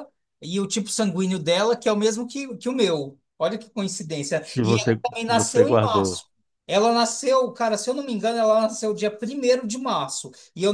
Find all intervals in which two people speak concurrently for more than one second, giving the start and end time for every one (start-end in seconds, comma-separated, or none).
4.5-6.2